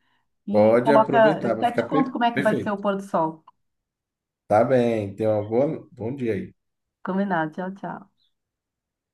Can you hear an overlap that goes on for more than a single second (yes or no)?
yes